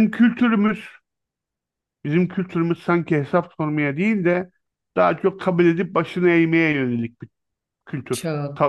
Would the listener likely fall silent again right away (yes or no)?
no